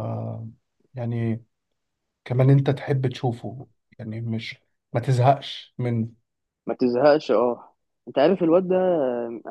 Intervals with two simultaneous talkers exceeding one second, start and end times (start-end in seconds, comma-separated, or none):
none